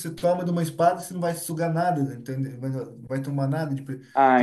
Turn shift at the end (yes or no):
yes